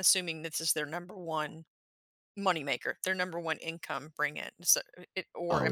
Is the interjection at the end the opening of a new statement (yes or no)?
yes